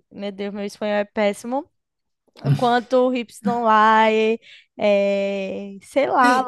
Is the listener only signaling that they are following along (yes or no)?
yes